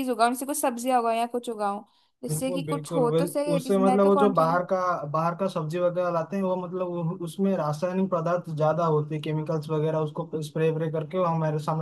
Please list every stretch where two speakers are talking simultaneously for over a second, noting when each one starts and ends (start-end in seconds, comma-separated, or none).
2.3-4.6